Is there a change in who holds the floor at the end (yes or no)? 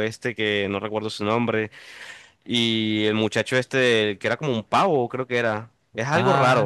yes